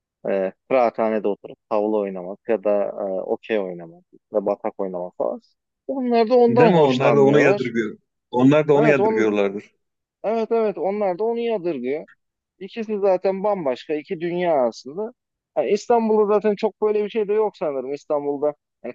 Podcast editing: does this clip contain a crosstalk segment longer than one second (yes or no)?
yes